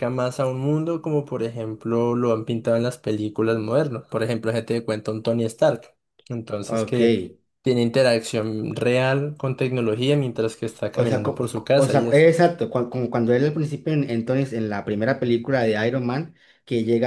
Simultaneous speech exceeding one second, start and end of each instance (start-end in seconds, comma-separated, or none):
10.9-12.3